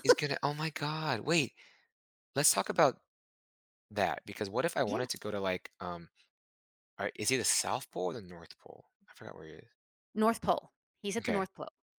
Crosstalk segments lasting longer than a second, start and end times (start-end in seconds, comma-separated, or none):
none